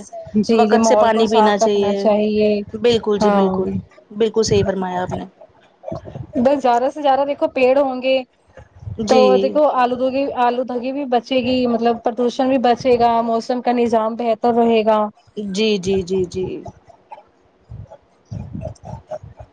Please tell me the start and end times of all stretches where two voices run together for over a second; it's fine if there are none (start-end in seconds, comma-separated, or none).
0.6-1.9